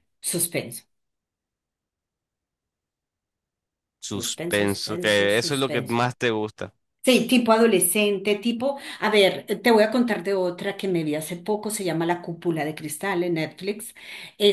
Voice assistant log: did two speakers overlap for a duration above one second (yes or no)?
yes